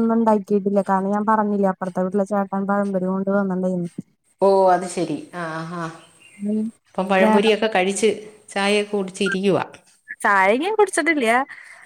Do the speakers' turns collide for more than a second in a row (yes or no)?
no